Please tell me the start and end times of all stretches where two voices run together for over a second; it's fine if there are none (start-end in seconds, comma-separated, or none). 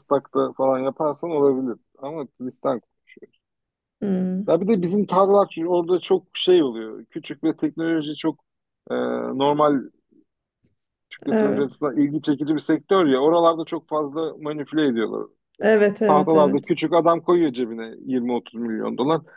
none